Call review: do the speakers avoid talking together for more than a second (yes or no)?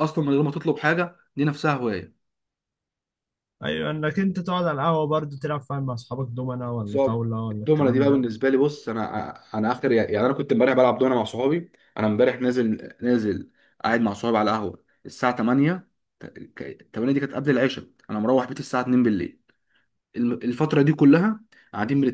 no